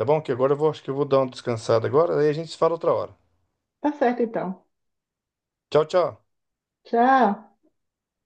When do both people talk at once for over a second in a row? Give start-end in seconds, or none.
none